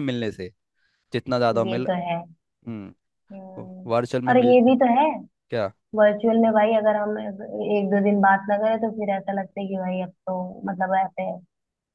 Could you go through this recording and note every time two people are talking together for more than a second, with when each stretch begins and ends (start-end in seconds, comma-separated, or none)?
none